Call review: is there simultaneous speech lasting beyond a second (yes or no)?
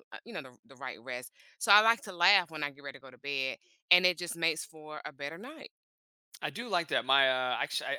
no